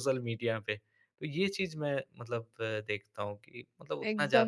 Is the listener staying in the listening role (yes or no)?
no